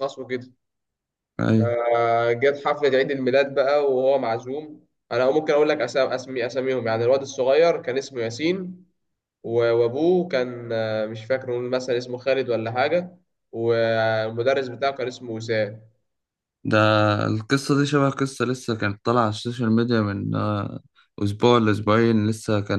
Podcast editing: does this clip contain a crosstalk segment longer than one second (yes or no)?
no